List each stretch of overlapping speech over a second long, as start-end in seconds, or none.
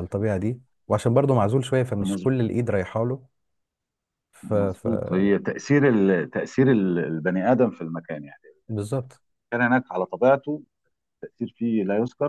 none